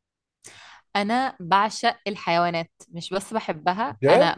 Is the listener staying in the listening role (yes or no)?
yes